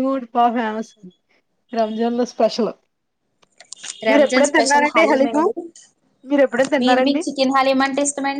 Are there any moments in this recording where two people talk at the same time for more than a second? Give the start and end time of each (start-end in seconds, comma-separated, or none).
4.1-5.4